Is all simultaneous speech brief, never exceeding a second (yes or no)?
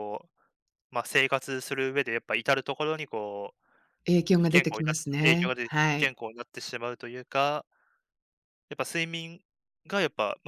no